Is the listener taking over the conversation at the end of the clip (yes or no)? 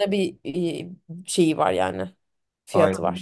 yes